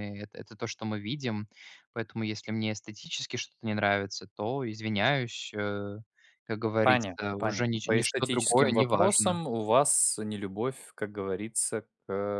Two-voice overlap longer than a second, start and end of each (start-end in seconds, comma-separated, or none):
6.8-9.4